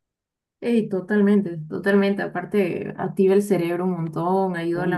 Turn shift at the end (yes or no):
no